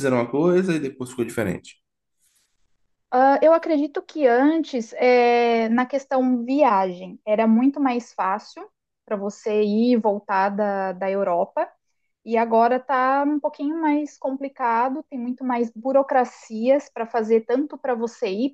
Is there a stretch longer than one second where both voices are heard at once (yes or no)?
no